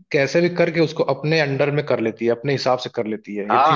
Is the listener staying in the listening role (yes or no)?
no